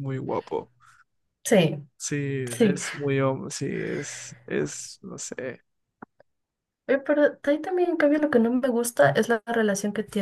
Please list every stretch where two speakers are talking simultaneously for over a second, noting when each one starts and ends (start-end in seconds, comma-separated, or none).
none